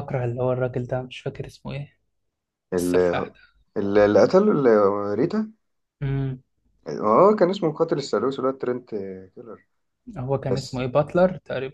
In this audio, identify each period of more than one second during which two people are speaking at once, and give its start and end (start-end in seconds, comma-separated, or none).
none